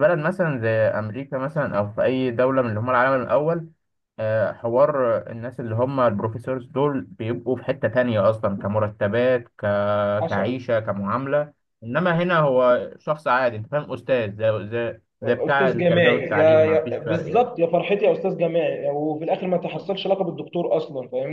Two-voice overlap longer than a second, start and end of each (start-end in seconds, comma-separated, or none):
15.2-17.5